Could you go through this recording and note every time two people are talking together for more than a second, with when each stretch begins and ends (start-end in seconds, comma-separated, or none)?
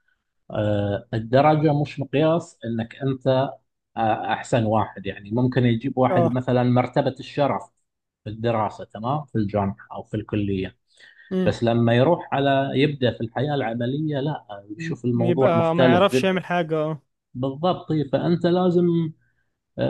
14.8-16.4